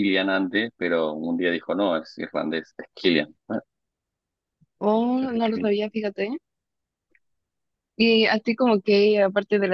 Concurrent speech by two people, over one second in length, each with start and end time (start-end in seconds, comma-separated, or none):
none